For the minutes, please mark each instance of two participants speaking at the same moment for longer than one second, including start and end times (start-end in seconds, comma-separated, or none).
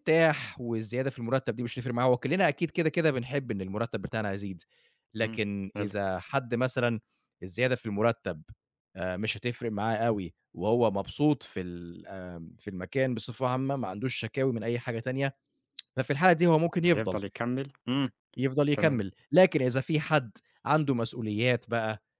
none